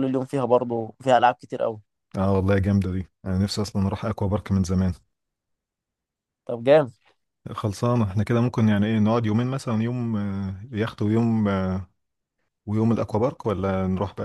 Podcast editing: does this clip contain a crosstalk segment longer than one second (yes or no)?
no